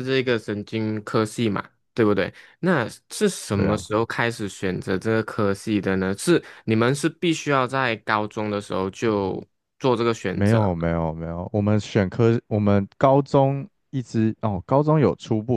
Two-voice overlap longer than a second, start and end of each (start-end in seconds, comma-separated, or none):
none